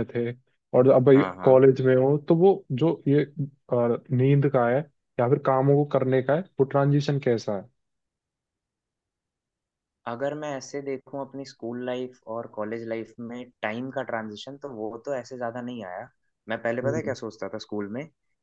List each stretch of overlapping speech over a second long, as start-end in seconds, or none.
none